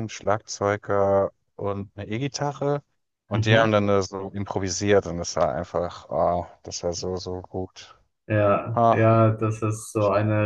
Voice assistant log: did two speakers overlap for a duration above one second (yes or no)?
no